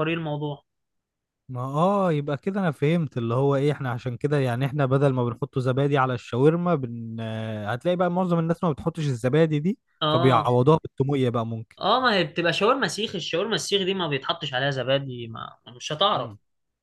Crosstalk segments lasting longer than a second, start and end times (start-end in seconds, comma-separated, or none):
none